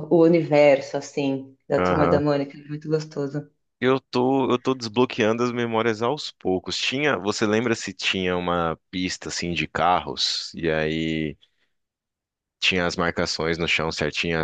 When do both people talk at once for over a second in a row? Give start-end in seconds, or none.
none